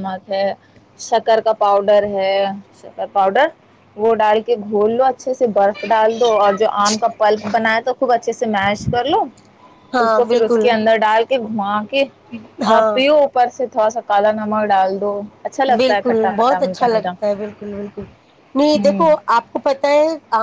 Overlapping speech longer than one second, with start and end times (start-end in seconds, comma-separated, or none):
15.8-17.1